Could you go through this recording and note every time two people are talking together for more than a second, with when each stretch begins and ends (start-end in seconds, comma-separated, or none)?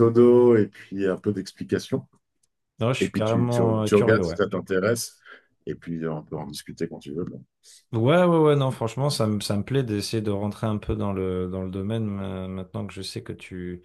3.0-4.4